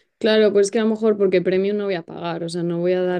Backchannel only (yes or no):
yes